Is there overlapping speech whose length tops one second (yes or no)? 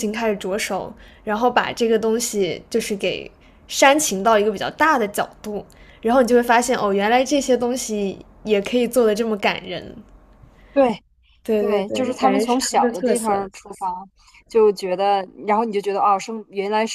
yes